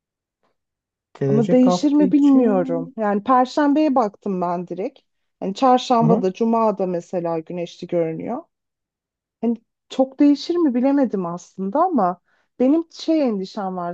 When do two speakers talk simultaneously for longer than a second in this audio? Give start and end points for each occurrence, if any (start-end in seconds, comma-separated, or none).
1.3-2.9